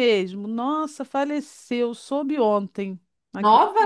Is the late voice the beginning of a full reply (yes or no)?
no